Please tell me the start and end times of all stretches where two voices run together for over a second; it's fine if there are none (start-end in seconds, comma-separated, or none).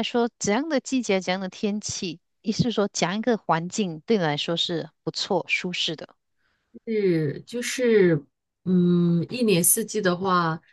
none